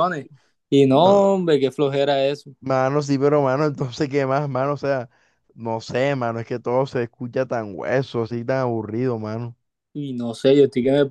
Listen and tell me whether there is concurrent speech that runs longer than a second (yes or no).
no